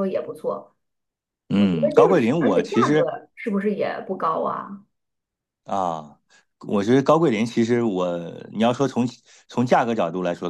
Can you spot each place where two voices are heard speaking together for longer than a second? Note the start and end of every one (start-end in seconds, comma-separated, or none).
1.6-3.1